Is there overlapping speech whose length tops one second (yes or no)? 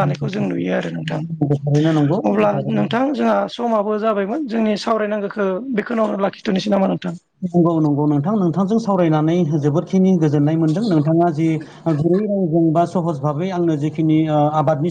no